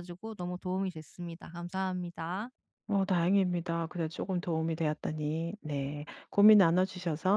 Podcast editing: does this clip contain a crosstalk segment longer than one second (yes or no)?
no